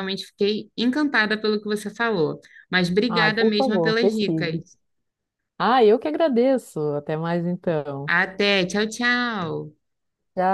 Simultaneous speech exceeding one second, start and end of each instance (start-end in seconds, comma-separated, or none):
3.1-4.6